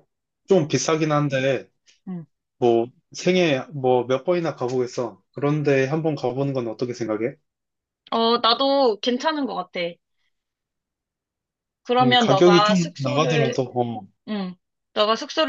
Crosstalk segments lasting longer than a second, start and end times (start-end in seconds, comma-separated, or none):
12.0-13.6